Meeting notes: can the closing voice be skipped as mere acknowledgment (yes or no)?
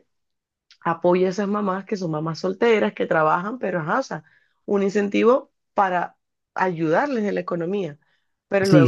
no